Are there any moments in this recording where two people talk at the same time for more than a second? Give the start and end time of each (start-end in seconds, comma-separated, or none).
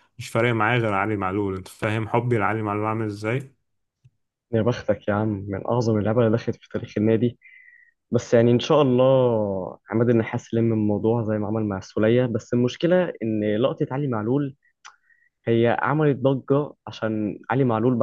none